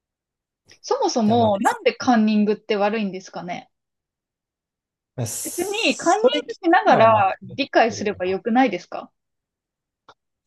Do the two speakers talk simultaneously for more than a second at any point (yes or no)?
yes